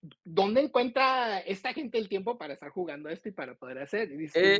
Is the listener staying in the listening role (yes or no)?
no